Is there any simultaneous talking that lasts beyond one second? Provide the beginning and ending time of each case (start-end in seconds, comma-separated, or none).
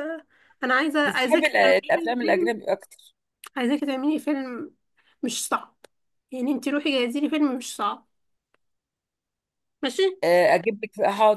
1.1-2.5